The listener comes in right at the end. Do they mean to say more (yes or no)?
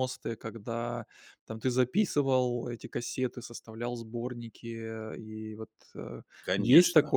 yes